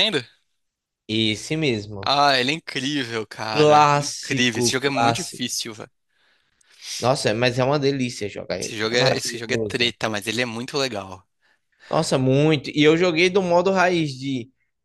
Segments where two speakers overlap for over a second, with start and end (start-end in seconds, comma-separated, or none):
3.5-5.5, 8.6-9.9